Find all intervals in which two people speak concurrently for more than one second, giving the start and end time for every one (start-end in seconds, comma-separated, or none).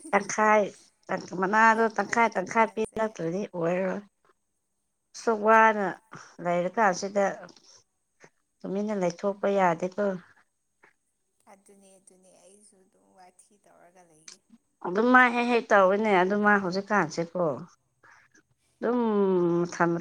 1.7-3.0